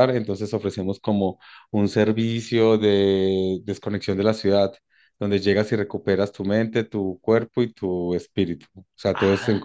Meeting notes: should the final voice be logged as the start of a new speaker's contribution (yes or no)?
no